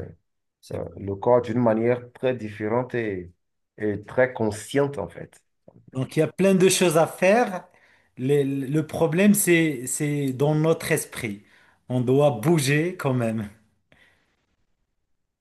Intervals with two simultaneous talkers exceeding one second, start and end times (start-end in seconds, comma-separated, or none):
none